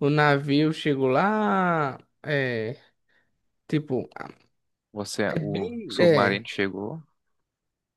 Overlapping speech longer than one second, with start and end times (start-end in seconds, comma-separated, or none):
5.3-6.5